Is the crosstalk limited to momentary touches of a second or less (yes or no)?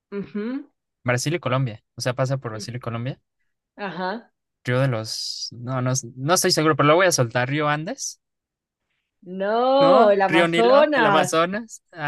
no